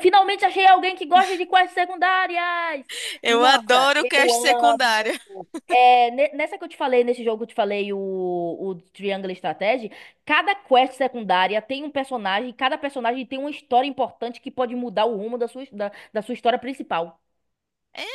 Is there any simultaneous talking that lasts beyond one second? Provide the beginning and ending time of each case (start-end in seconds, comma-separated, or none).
3.3-5.1